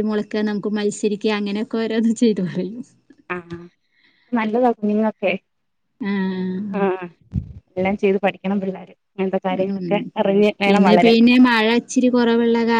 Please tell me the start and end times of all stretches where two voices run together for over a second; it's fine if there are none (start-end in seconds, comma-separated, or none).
none